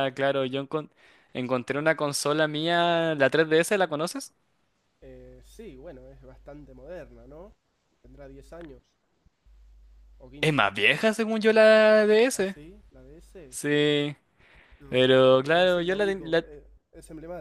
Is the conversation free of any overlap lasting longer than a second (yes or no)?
no